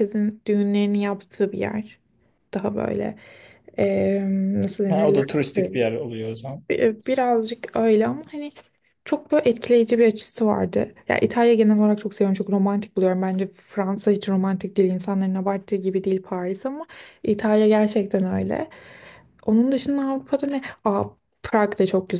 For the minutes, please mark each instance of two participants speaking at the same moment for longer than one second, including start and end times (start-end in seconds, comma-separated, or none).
none